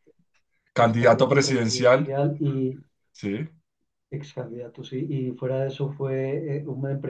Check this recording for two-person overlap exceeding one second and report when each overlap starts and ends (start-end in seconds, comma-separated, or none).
0.8-2.1